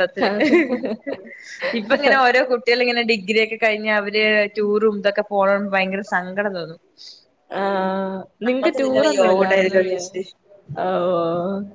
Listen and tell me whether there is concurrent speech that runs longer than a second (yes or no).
yes